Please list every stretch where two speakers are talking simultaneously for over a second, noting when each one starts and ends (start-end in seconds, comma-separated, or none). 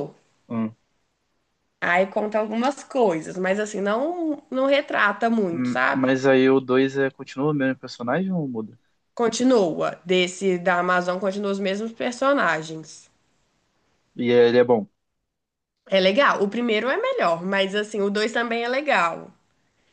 none